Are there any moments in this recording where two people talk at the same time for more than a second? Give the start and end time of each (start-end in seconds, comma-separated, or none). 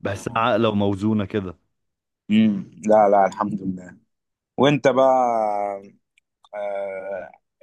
none